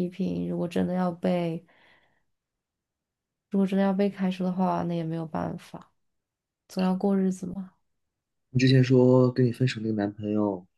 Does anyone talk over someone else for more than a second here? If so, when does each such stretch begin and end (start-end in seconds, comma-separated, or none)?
none